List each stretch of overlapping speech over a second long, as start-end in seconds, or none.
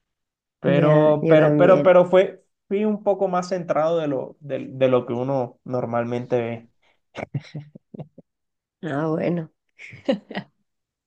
0.7-1.9